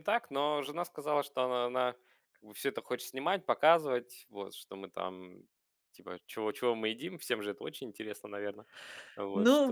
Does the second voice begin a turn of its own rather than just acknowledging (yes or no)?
yes